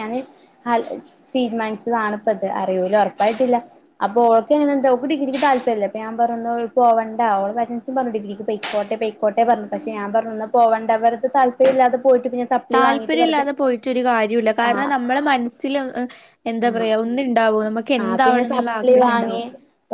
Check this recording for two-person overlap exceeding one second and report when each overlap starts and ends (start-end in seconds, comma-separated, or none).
18.0-19.4